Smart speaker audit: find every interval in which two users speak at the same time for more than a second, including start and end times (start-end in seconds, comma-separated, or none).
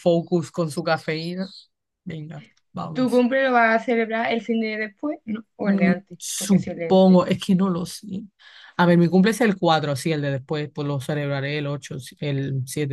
5.6-7.2